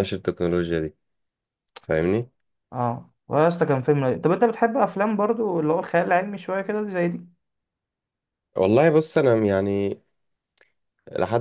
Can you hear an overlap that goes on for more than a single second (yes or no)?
no